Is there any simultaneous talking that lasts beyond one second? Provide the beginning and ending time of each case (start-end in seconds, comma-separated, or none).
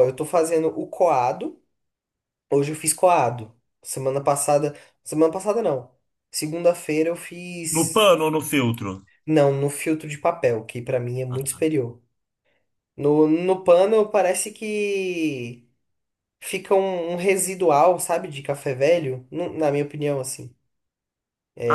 none